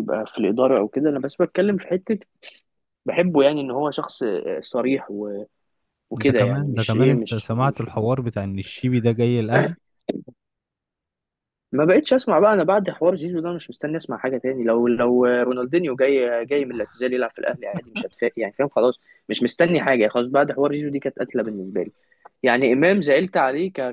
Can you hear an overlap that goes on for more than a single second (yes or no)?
yes